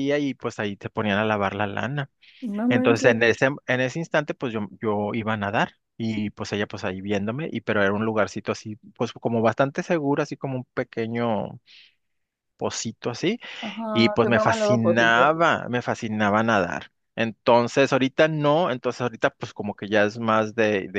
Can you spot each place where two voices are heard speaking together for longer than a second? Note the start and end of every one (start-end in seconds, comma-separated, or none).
13.9-15.3